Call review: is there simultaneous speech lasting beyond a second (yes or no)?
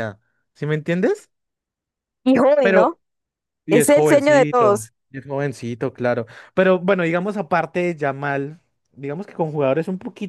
yes